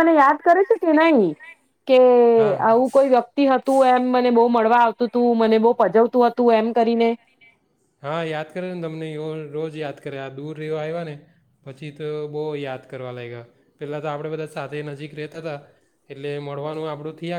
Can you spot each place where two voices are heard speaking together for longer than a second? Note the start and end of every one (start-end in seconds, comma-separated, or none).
none